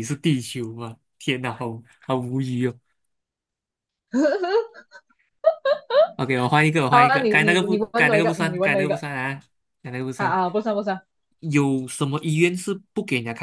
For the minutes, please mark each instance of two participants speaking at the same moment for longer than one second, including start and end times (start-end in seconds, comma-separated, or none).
6.9-9.0